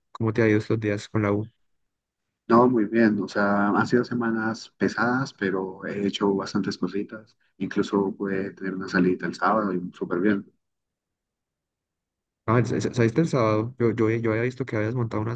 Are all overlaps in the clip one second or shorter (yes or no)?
yes